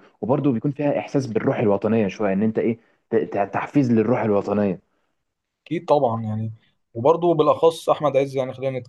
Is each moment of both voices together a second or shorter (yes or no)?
yes